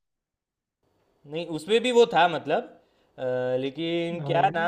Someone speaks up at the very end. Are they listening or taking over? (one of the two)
listening